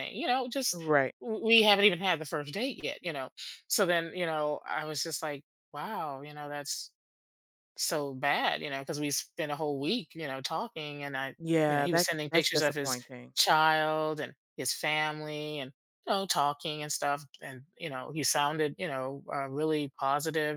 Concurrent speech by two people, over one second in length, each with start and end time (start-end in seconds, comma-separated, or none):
11.4-13.0